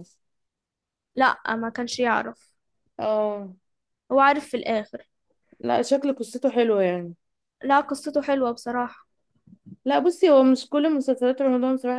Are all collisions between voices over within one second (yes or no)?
yes